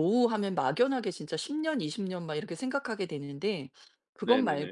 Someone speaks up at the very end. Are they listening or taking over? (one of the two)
listening